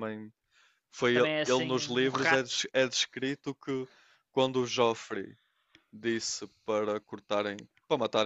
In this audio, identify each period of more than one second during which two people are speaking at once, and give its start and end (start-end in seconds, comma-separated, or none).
1.1-2.6